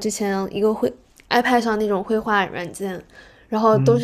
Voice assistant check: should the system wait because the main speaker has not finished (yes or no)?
yes